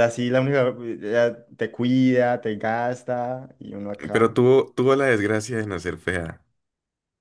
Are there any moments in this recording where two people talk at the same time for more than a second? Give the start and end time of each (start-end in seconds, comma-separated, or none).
none